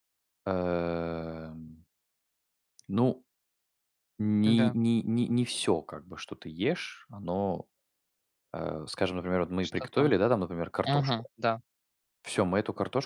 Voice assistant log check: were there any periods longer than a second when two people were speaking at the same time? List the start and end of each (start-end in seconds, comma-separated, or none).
none